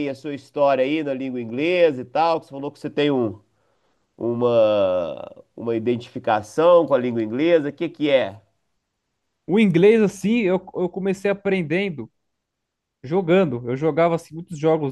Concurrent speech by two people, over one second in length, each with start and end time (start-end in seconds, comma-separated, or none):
none